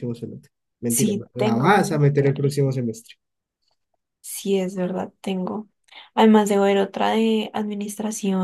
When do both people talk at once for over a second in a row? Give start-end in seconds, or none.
0.9-2.5